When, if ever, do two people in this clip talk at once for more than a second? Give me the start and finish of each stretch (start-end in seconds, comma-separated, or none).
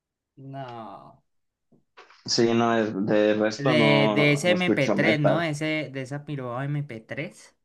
3.6-5.4